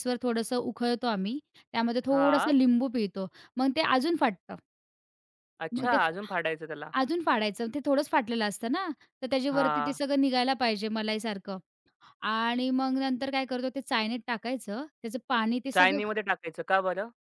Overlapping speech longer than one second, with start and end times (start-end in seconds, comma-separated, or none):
none